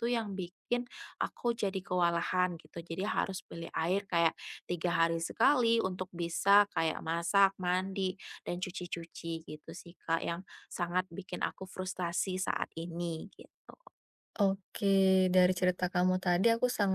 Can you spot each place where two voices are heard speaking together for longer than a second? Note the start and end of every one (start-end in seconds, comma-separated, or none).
none